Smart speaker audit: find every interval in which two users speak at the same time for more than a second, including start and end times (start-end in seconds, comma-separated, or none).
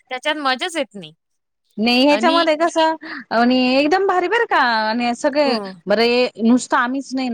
none